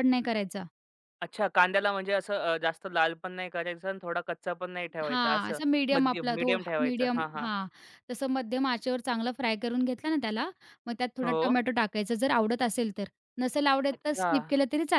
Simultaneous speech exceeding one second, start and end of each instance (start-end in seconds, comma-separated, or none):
5.0-7.5